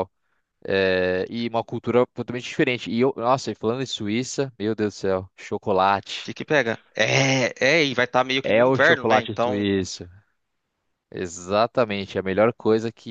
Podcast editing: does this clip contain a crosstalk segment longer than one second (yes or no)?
yes